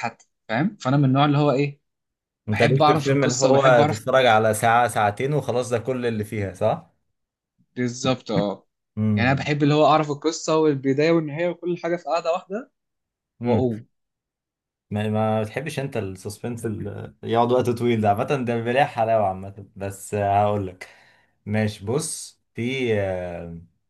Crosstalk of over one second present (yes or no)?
yes